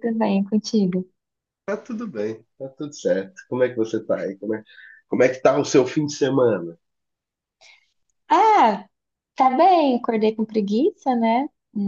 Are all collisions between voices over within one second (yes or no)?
yes